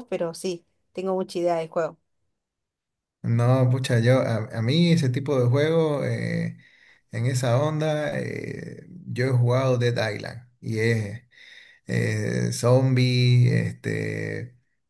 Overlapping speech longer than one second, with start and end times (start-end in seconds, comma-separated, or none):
none